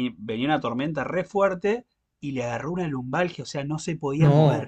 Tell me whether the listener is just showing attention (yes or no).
yes